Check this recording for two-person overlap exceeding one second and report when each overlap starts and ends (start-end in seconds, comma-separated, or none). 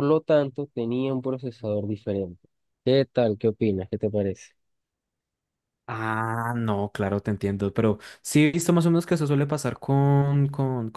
none